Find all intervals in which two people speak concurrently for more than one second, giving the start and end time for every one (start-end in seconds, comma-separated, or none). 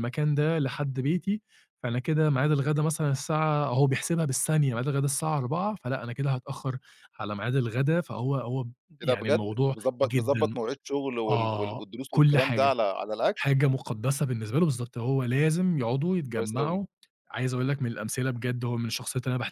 9.0-10.6, 11.3-12.7